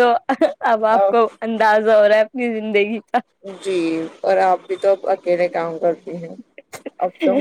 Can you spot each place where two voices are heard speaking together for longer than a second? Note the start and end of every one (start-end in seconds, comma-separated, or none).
none